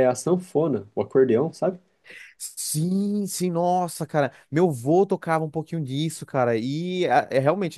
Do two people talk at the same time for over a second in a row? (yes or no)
no